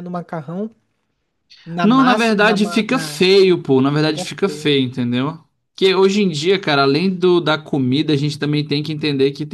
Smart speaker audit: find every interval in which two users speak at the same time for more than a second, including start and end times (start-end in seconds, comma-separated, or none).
1.8-3.2